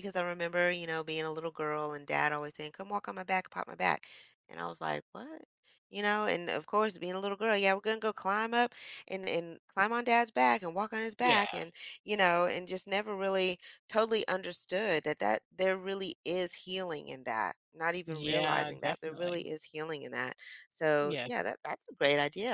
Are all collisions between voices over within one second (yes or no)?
no